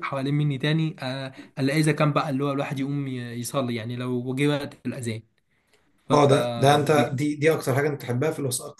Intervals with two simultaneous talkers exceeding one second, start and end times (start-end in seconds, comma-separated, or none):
none